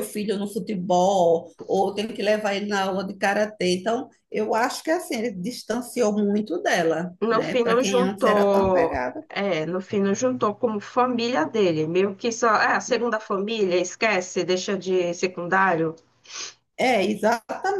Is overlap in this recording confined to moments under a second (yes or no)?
no